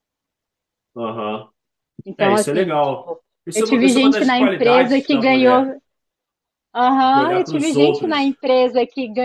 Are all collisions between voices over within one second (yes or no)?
no